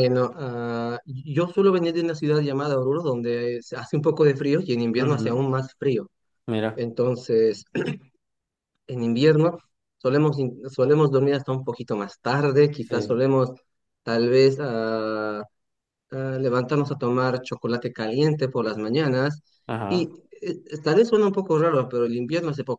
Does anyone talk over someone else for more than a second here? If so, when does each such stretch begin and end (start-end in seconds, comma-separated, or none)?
none